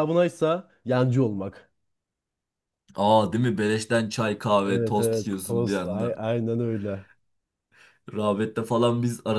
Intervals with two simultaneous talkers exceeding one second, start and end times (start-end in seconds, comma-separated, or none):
4.6-6.2